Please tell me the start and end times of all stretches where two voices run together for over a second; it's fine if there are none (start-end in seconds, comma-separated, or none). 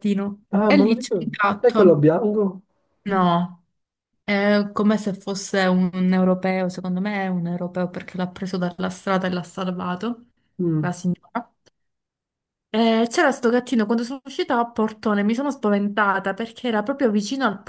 0.5-2.0